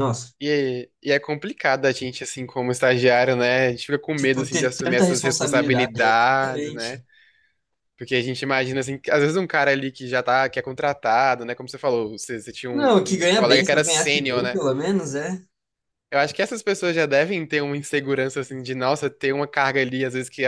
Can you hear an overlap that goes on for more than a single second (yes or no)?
yes